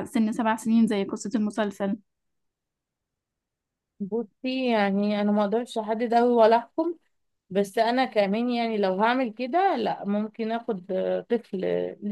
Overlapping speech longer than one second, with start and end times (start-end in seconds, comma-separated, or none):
none